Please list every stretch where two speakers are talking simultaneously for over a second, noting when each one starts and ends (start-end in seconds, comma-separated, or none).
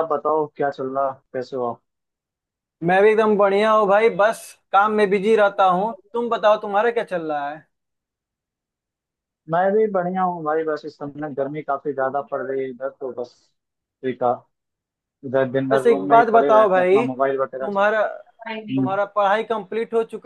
15.7-17.8